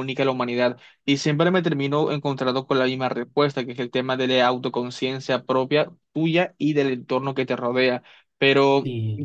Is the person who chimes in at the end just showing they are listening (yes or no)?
yes